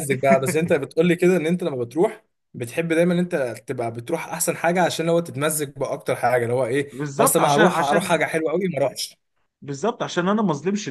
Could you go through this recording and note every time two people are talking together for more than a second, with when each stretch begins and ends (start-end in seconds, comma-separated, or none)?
6.9-8.3